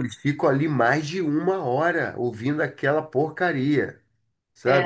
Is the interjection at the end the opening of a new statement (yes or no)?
yes